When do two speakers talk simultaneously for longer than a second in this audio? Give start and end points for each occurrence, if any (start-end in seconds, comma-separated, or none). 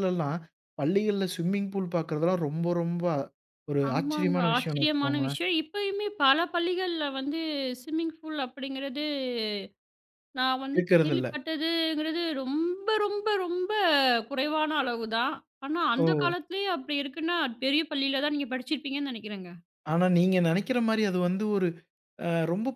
3.9-5.4